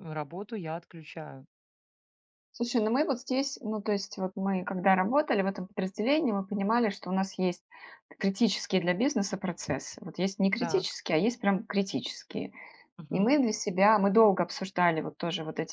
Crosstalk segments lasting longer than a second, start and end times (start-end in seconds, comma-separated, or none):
none